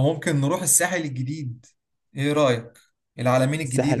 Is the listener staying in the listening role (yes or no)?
no